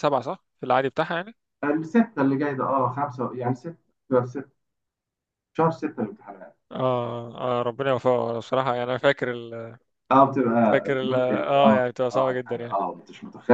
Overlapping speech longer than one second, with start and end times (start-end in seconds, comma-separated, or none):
10.7-12.8